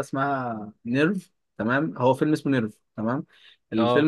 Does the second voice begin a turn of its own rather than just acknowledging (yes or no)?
no